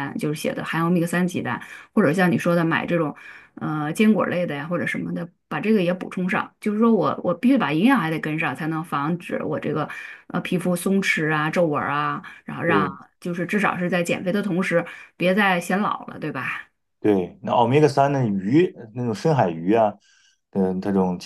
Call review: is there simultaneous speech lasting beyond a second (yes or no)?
no